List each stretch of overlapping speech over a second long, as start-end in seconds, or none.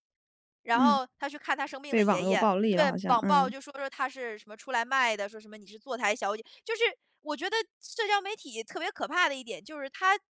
1.9-3.5